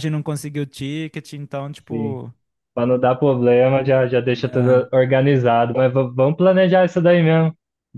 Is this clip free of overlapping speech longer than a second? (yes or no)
yes